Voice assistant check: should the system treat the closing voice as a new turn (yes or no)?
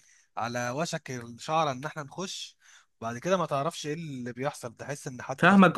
yes